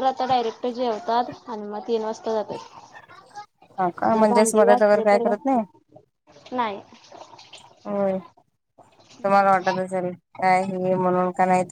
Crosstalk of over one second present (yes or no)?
yes